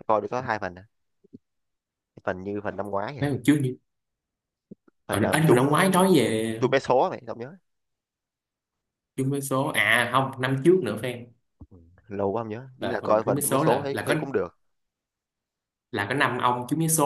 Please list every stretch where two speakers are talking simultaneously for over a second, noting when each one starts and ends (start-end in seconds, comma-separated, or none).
12.8-14.1